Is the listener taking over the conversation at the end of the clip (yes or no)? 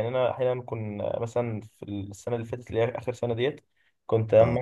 no